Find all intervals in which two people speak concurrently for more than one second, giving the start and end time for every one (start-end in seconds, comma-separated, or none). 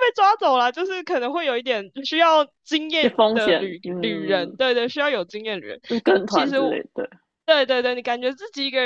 3.0-4.6